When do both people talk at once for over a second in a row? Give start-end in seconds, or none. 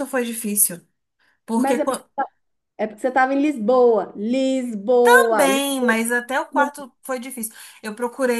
none